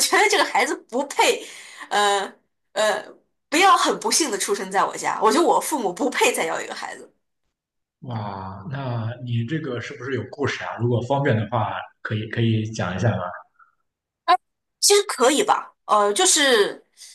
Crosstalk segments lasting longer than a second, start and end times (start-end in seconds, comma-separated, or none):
none